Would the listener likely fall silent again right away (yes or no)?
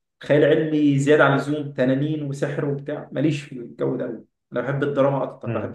yes